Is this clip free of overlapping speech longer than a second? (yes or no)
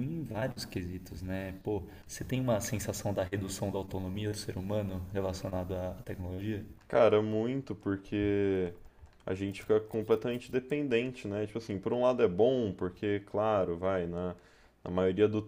yes